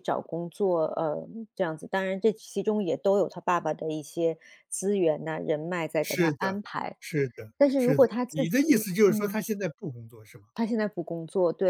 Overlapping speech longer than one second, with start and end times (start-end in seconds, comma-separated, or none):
7.6-9.4